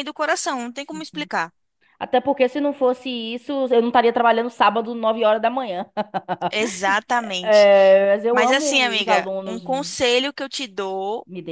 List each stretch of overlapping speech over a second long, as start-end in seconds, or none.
8.3-9.6